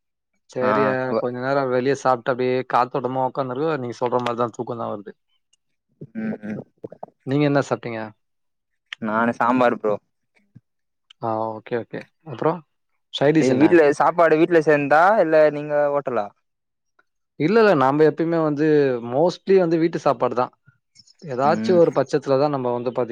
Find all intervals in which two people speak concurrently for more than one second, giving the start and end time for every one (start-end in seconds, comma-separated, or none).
none